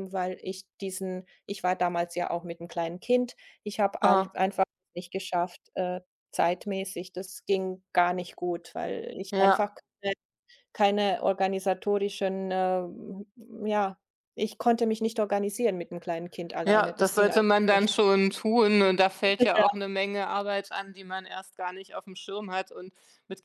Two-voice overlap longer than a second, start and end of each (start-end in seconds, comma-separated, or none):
16.6-17.9